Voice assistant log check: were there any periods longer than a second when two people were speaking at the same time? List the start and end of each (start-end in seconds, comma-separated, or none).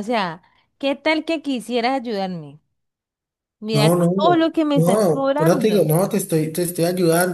3.7-5.9